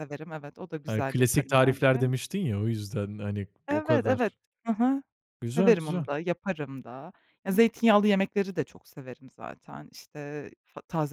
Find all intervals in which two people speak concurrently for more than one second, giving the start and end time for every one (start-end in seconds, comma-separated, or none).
0.9-2.1